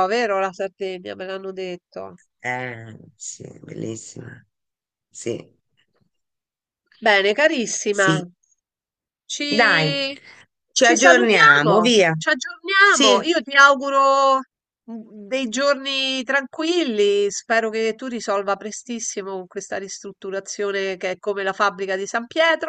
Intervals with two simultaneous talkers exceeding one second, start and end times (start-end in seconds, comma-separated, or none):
10.8-12.1